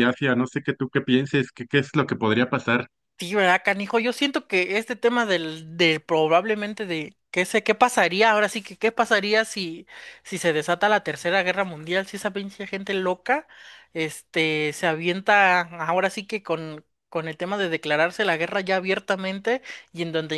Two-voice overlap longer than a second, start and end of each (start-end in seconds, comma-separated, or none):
none